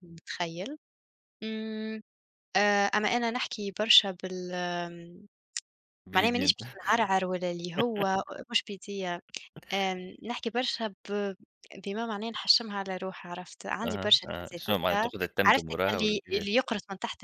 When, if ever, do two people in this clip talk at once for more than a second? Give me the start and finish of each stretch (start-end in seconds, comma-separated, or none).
13.8-16.6